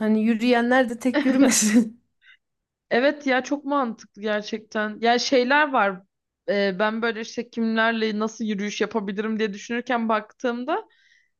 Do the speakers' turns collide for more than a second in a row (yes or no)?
no